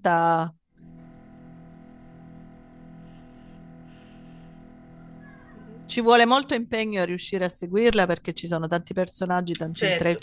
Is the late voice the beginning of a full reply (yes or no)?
no